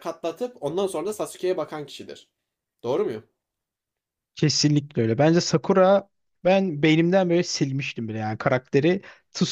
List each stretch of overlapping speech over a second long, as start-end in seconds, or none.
none